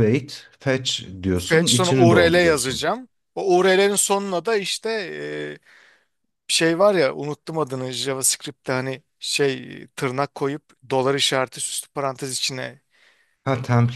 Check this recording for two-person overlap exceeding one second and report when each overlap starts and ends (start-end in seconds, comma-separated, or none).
1.5-2.8